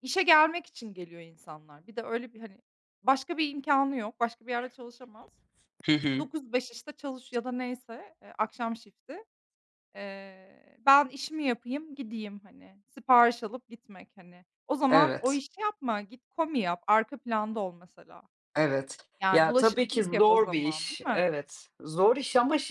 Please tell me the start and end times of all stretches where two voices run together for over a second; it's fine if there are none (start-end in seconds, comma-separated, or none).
19.2-21.3